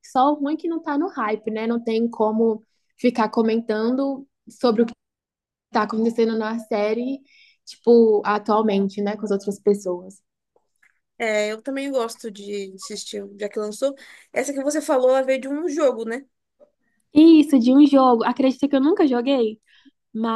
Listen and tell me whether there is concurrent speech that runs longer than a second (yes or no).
no